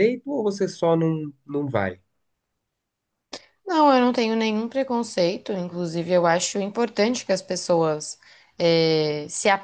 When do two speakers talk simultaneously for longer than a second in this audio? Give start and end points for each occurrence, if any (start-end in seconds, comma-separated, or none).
none